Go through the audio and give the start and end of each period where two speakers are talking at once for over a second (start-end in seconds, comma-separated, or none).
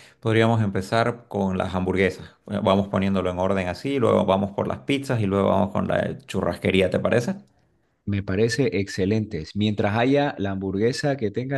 none